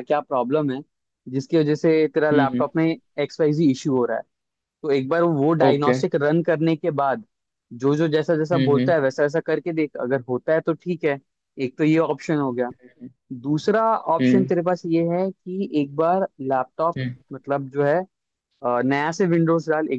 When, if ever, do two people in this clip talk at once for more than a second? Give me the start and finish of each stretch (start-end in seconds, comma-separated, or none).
none